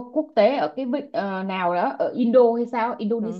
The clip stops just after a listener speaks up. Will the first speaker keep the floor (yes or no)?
no